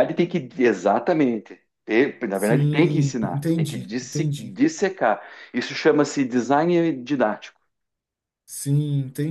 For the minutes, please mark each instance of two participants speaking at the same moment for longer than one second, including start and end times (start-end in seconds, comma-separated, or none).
2.3-4.6